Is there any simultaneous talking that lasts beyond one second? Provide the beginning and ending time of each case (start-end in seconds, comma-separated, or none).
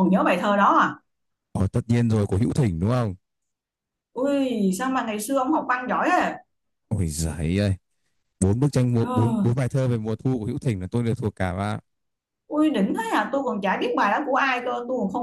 none